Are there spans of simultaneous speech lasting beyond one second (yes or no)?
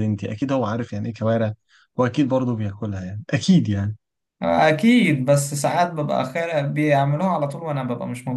no